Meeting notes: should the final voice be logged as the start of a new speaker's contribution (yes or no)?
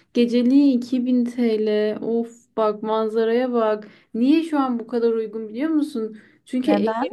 no